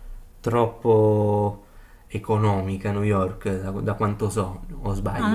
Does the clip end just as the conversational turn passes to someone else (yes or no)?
yes